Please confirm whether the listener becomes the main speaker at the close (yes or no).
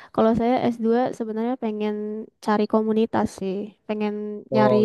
no